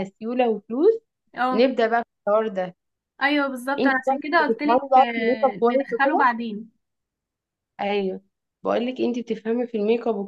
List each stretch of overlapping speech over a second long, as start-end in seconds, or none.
3.8-6.3